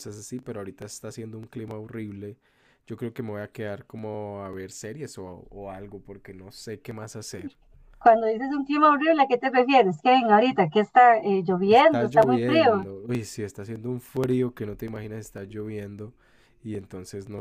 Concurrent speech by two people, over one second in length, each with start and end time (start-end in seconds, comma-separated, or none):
11.7-12.9